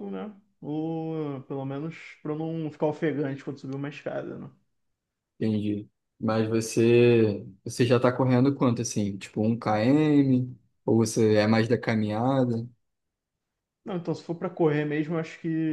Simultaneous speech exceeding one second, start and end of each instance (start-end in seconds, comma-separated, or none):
none